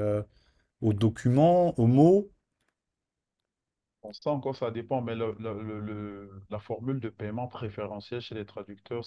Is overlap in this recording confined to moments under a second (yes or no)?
yes